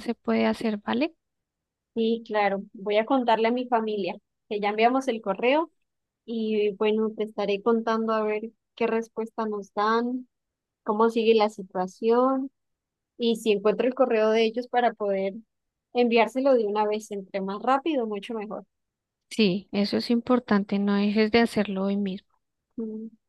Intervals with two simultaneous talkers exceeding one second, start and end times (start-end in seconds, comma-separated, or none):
none